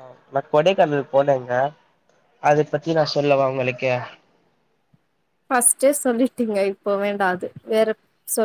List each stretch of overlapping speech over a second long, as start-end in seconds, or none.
none